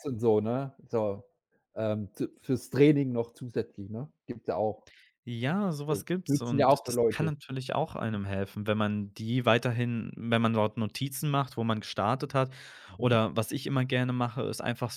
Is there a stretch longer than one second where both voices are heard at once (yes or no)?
yes